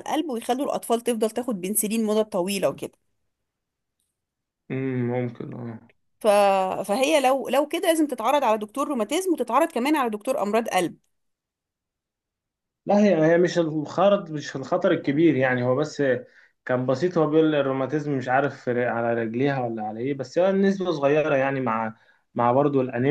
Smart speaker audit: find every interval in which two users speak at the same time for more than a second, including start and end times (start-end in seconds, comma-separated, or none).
none